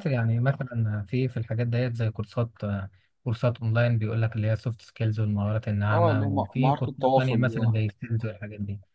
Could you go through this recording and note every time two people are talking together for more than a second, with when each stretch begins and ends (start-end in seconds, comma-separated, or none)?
5.9-7.8